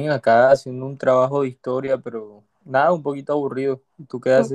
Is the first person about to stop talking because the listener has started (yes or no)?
yes